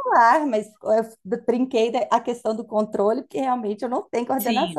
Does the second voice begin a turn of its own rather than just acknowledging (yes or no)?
yes